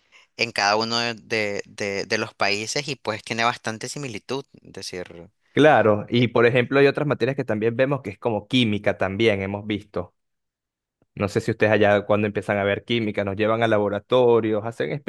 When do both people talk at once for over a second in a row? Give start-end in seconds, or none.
none